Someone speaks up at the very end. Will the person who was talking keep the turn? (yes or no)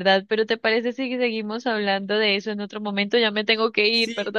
no